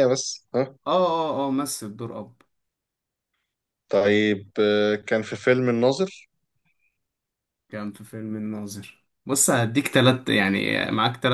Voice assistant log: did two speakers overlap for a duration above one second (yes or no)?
no